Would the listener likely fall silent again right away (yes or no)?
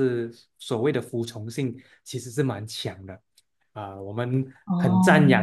yes